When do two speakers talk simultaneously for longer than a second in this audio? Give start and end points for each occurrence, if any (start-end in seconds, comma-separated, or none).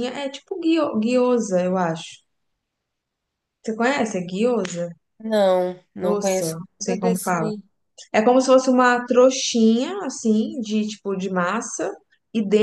6.0-7.5